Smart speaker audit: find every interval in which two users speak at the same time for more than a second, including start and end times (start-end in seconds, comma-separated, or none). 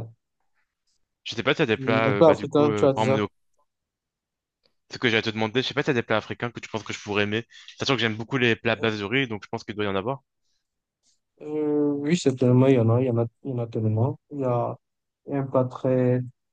1.8-3.2